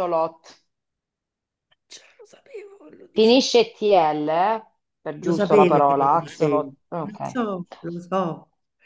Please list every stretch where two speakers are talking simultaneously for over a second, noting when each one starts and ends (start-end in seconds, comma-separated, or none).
5.2-7.4